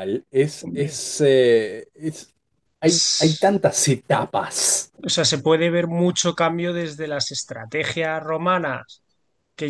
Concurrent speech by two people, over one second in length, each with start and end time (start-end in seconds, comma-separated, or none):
none